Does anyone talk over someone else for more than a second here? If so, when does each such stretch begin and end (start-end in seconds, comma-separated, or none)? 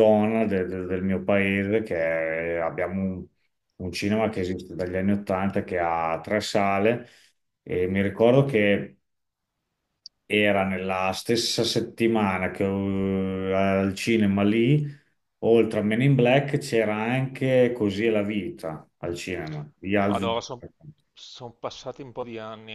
none